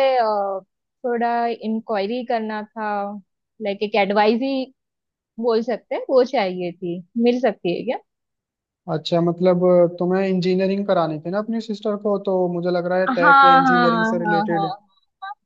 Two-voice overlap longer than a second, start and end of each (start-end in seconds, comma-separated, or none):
13.1-14.7